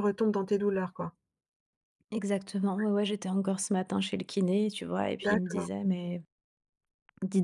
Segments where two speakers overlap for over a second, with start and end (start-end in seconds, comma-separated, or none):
none